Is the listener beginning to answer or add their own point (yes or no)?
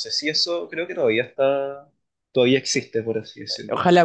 yes